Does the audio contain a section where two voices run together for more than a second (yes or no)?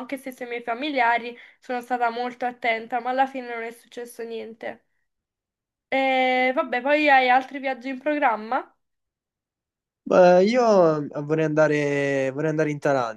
no